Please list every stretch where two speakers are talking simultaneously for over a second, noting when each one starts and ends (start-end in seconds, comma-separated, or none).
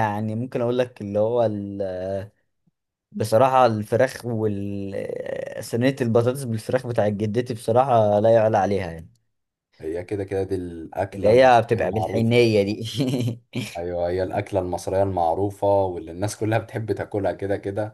11.1-12.5